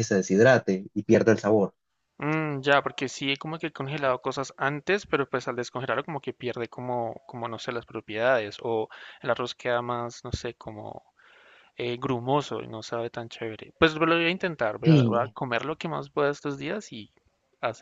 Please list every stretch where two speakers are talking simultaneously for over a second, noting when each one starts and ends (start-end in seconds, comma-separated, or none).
none